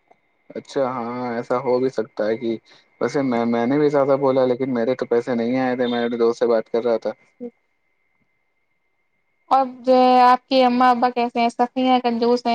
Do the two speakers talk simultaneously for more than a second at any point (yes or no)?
no